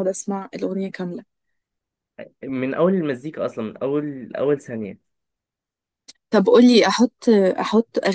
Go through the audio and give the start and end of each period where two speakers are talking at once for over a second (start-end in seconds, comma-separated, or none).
none